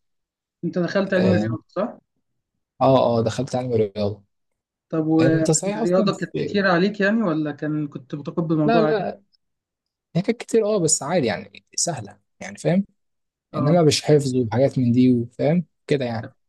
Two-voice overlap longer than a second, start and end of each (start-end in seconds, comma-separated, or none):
5.2-6.6